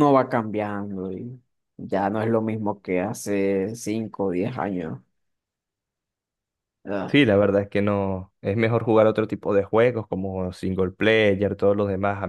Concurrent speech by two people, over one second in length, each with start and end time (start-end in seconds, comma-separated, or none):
none